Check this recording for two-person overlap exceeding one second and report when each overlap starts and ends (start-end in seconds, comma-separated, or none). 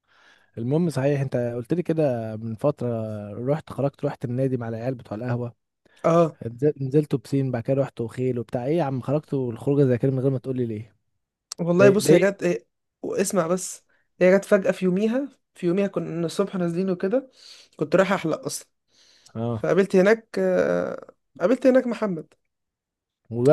none